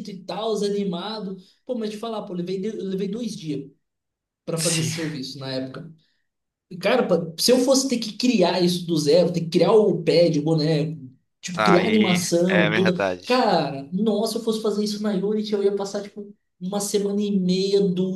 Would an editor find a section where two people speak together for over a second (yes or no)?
yes